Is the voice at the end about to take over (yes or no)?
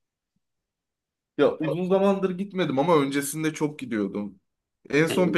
no